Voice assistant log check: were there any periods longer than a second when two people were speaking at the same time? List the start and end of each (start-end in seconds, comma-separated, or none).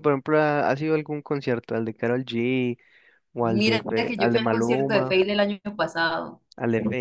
3.5-5.2